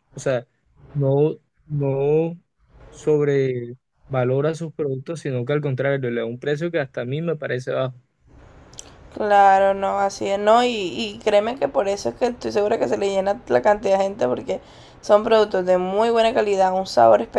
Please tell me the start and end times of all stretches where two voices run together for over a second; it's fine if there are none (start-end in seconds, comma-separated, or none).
none